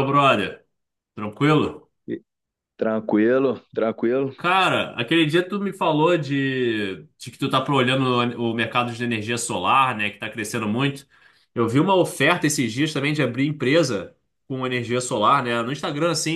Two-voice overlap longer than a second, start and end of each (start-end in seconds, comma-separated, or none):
none